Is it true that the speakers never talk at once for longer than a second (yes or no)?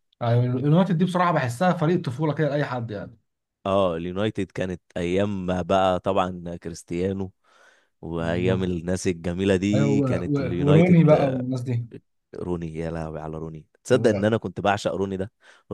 no